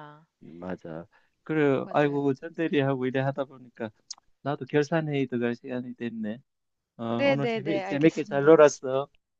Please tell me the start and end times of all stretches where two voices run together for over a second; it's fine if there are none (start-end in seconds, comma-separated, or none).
7.1-8.6